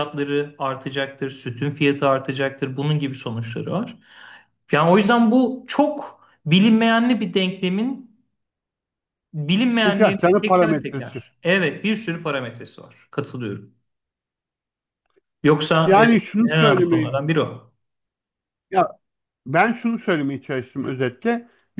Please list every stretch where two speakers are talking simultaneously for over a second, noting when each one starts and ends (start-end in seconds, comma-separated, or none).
9.8-11.2, 15.8-17.2